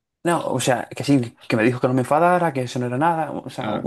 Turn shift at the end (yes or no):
no